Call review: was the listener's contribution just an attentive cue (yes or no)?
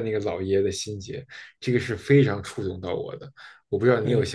no